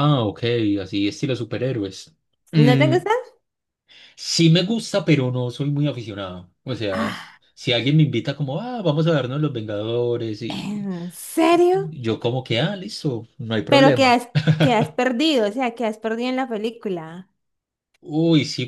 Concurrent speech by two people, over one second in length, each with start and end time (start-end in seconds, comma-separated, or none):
none